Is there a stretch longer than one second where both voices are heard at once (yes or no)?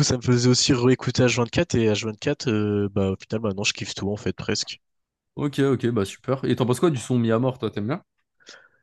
no